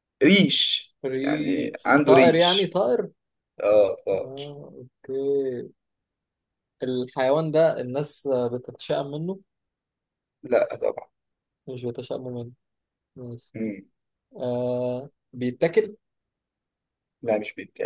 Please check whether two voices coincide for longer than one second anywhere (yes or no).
yes